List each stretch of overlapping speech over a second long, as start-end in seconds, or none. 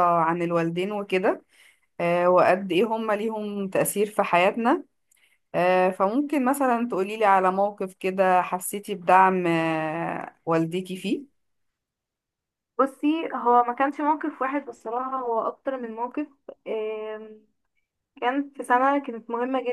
none